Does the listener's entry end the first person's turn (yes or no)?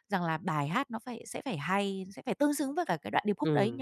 yes